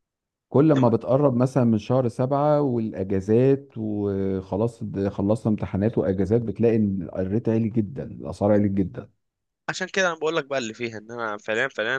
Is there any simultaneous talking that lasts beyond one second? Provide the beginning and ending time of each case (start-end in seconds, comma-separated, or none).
none